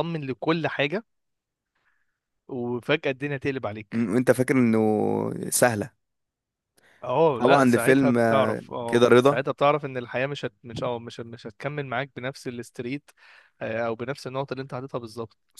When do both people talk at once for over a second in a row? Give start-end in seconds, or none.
7.3-9.4